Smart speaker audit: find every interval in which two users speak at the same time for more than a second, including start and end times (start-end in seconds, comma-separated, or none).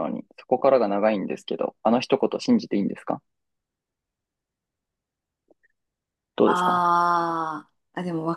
none